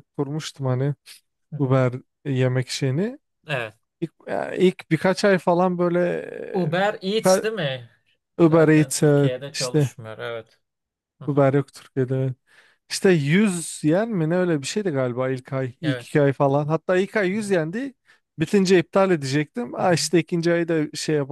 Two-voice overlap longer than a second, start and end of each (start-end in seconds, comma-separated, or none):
8.4-9.9